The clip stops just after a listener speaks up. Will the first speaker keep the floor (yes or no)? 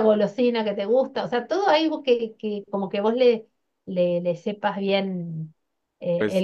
no